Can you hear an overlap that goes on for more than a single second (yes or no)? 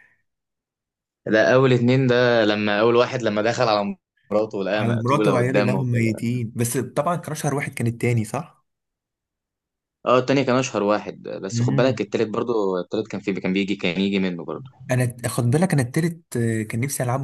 yes